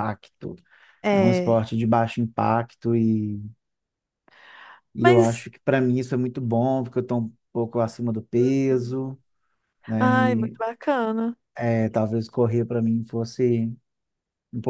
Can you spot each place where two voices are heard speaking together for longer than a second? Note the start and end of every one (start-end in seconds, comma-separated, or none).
none